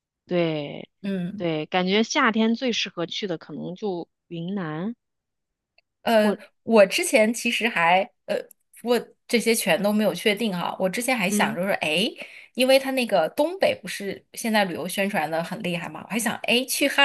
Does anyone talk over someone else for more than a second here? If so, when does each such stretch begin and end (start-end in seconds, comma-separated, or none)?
none